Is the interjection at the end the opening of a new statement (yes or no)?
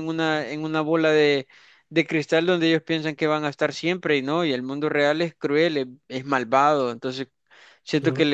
no